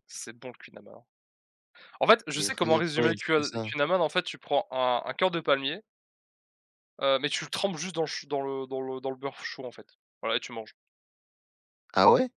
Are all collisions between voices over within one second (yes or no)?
no